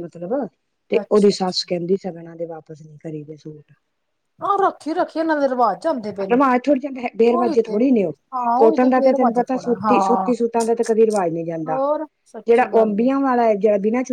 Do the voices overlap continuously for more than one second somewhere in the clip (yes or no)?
yes